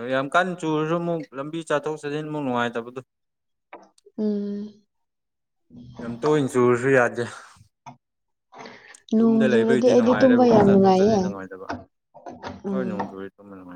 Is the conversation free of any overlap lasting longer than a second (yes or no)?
no